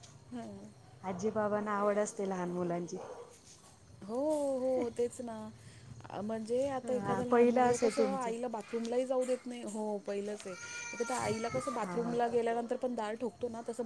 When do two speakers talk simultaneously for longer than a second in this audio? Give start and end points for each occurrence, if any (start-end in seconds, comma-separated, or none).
6.8-8.3